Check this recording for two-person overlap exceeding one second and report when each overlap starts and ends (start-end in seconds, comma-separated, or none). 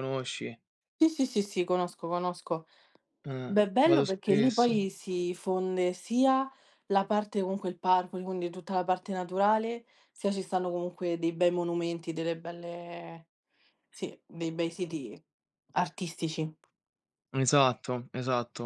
3.5-4.8